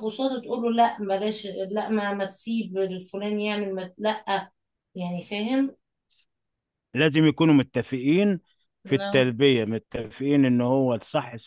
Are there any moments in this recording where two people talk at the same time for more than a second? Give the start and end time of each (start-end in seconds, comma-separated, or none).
none